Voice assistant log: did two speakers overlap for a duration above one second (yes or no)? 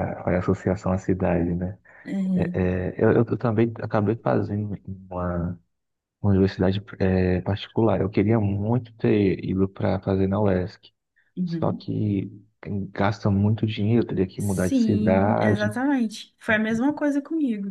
yes